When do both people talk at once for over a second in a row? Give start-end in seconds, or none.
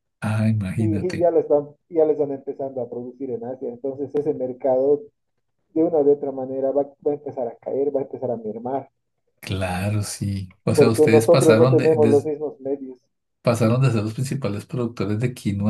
10.7-12.3